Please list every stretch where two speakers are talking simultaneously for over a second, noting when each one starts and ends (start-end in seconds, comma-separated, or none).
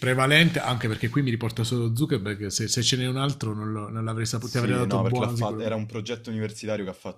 4.4-5.6